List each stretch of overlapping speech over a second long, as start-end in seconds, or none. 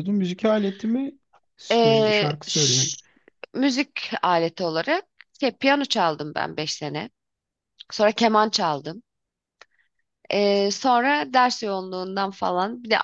1.7-2.9